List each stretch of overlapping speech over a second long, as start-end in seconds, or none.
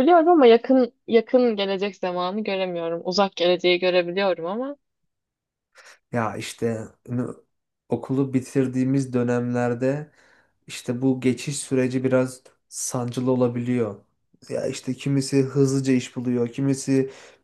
none